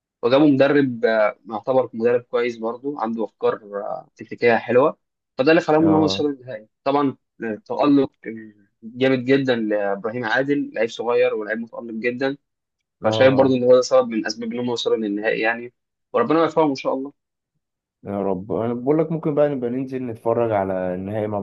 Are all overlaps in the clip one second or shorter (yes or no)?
yes